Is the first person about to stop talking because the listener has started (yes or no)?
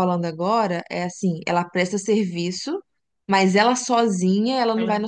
no